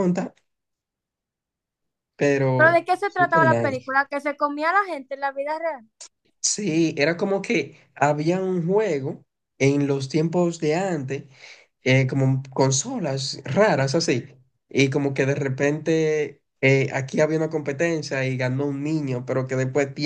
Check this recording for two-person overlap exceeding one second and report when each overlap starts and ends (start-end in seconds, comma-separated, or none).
2.5-4.0